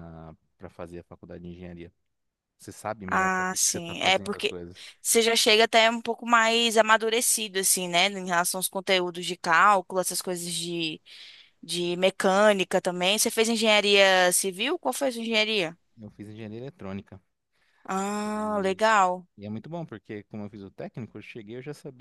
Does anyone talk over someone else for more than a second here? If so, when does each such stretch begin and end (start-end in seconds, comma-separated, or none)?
3.1-4.5